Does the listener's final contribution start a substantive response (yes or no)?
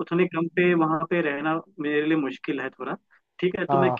no